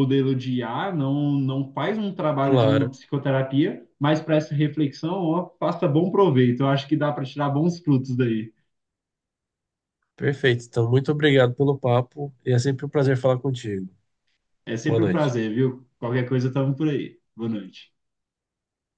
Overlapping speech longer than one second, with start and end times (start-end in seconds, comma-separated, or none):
none